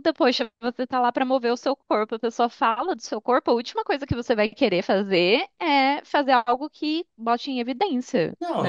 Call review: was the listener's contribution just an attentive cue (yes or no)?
no